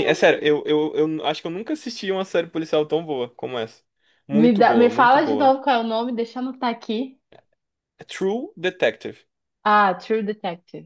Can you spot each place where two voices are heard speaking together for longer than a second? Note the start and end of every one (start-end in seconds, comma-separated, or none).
4.3-5.6